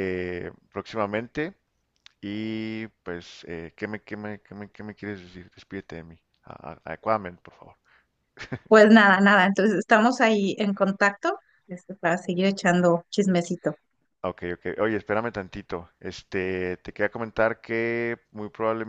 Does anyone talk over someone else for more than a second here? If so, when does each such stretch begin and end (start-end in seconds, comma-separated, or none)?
none